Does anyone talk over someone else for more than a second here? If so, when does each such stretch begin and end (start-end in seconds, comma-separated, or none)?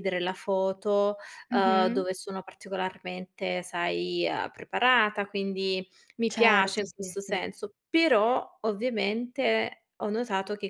6.3-7.5